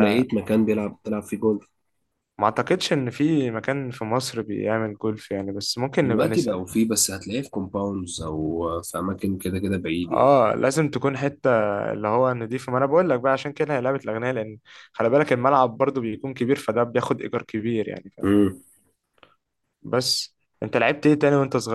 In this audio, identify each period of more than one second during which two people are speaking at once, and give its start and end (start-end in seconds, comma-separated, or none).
none